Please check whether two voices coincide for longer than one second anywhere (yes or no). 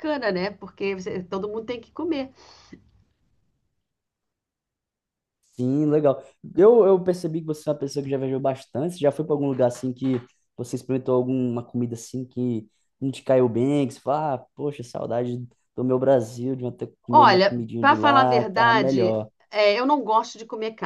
yes